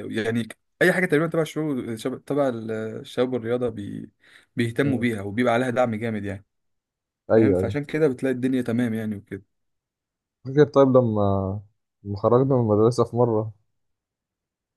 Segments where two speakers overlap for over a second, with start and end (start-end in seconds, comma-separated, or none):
none